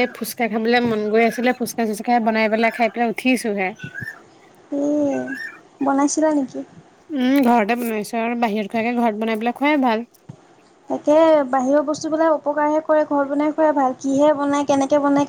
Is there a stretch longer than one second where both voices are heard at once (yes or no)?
no